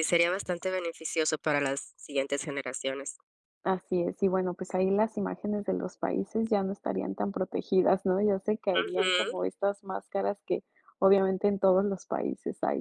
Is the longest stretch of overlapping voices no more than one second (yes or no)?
yes